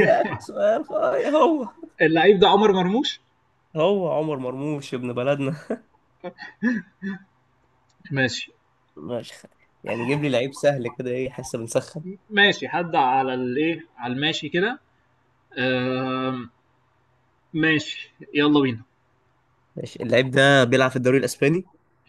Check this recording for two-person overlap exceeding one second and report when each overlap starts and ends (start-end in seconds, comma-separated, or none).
none